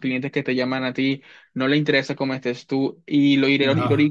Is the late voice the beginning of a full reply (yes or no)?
no